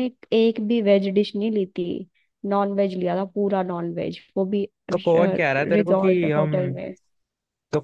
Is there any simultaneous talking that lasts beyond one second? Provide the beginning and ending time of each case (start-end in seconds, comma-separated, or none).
4.9-6.8